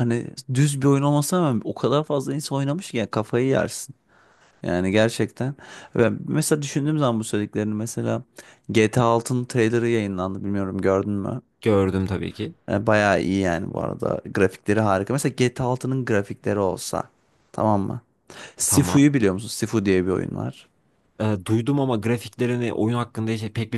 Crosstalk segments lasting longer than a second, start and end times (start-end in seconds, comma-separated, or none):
none